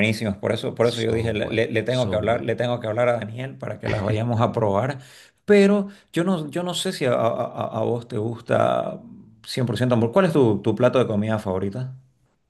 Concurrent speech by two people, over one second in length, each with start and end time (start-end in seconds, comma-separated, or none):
0.8-2.5